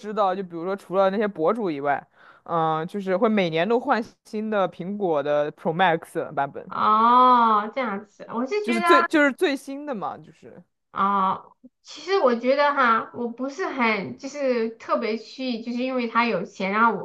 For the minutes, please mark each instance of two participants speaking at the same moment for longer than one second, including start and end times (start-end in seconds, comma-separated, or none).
none